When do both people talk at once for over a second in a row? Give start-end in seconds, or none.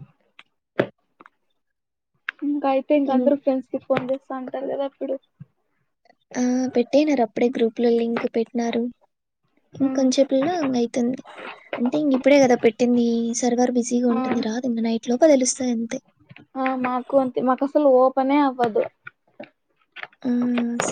none